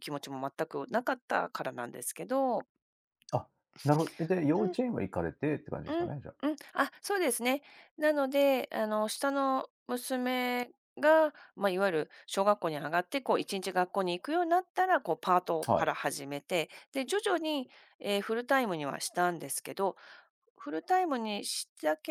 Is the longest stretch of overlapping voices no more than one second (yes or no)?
yes